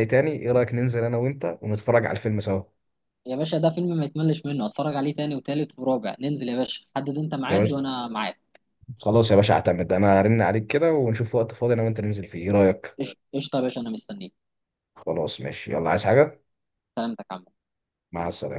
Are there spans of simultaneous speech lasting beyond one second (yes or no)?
no